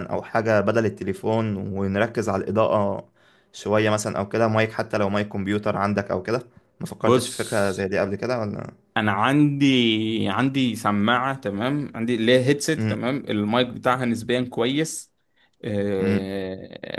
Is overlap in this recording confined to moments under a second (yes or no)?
yes